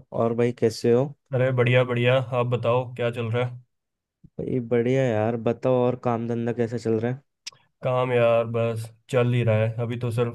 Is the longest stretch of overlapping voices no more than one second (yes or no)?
yes